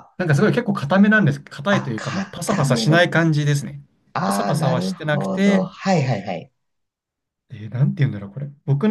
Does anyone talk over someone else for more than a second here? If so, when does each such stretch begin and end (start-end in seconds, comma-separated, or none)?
1.7-3.1, 4.2-5.7